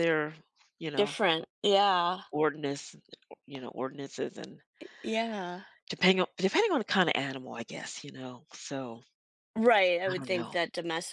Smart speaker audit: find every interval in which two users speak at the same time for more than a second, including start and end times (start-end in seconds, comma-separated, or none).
none